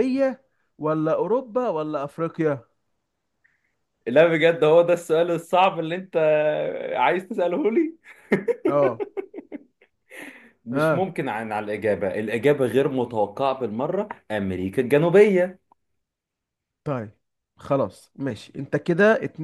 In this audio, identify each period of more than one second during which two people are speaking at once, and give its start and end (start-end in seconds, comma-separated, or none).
none